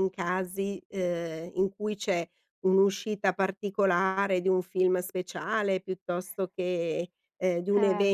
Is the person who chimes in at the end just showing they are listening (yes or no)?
yes